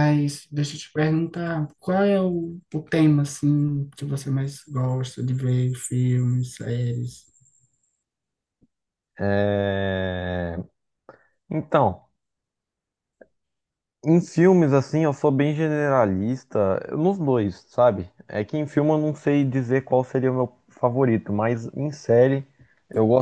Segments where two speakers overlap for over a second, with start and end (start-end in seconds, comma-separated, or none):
none